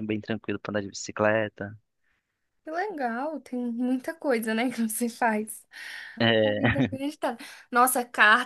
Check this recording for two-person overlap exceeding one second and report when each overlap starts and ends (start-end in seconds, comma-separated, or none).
none